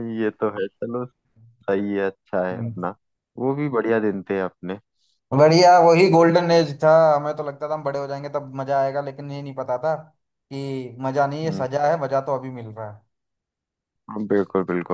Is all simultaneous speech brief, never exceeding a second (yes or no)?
yes